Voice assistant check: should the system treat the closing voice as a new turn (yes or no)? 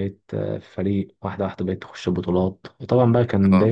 no